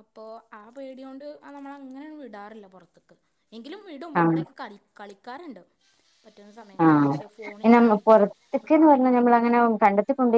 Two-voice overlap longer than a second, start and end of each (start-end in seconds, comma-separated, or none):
none